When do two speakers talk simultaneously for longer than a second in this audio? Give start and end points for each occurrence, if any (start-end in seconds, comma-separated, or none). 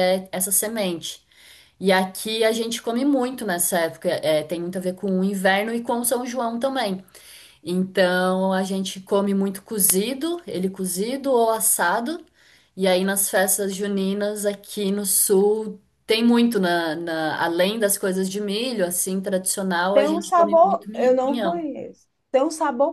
19.9-21.7